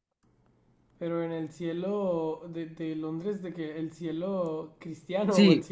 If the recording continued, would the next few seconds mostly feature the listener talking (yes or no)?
yes